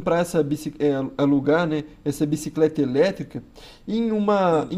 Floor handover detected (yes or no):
no